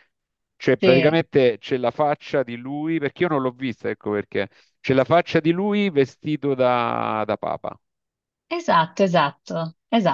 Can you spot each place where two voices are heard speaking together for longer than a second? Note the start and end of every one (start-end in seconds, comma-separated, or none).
none